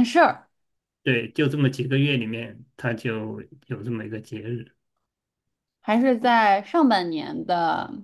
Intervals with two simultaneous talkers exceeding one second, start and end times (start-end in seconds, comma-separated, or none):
none